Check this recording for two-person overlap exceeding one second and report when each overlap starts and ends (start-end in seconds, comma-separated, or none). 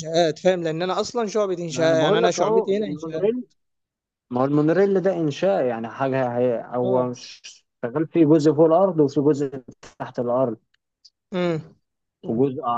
1.7-3.3